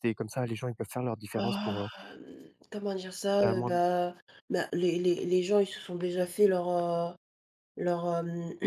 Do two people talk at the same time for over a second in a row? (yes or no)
no